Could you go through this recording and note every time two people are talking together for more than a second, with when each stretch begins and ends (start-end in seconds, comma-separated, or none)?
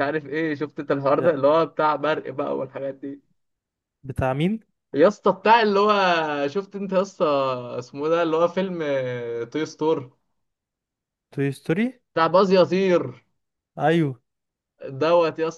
none